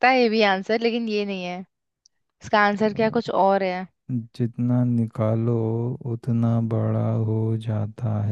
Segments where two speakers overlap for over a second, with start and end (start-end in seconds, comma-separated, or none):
none